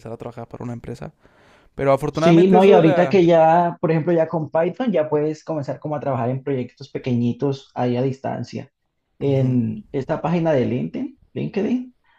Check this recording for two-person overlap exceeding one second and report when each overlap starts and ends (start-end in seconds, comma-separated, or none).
2.1-3.4